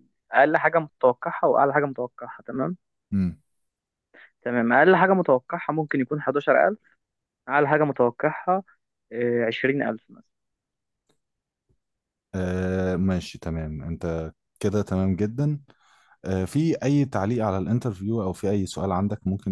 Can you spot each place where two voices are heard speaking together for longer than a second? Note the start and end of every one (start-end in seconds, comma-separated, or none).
none